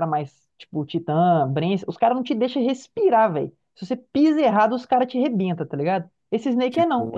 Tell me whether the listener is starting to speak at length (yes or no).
no